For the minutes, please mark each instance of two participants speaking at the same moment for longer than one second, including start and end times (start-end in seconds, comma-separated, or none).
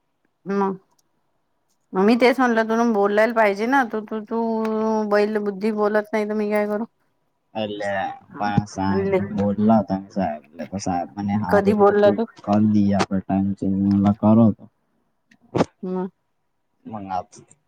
none